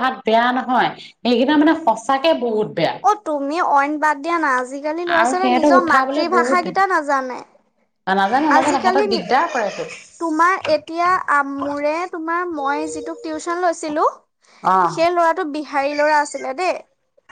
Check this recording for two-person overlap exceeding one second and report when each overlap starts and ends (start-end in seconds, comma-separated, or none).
5.2-6.8